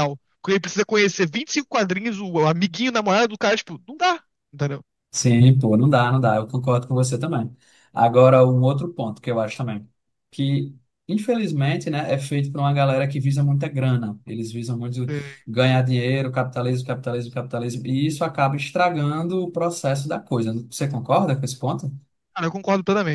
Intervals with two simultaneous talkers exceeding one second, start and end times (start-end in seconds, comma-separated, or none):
none